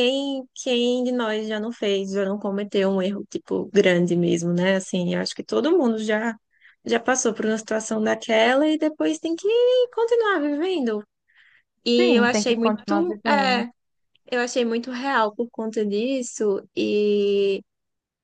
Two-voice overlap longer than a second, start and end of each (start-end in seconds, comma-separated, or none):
12.0-13.6